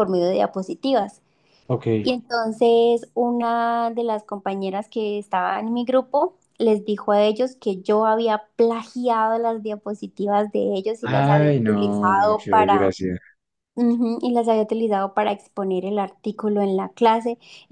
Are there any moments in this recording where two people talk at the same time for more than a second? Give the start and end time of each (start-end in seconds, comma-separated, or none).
11.0-13.0